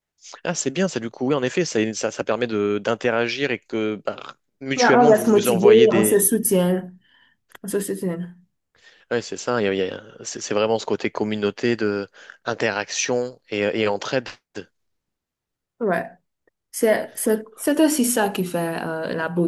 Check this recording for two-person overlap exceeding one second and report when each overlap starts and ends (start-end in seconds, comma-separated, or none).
4.8-6.2